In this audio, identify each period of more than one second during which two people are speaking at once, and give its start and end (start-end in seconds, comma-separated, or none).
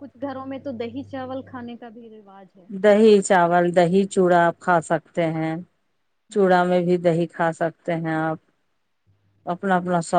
none